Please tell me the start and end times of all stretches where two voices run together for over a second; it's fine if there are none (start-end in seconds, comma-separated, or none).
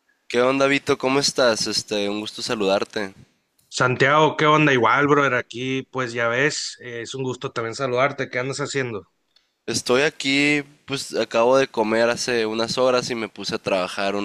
none